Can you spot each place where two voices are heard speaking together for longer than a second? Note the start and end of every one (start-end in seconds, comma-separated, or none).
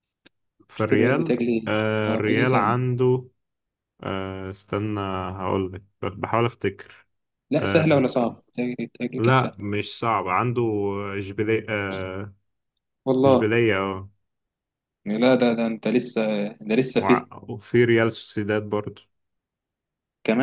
0.7-2.8